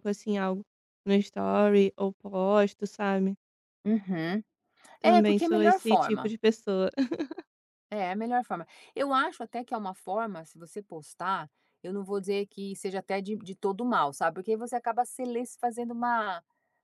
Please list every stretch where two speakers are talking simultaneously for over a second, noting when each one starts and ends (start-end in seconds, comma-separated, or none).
5.0-6.3